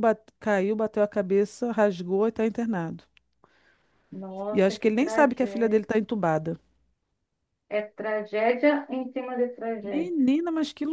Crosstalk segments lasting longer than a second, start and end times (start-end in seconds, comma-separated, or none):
4.5-5.8